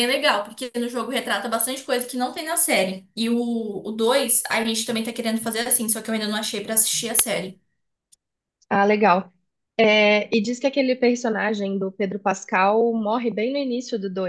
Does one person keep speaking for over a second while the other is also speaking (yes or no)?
no